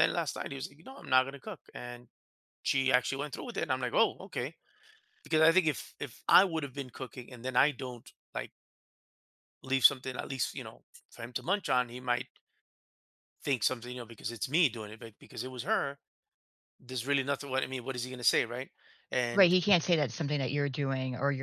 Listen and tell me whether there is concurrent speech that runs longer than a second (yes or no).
no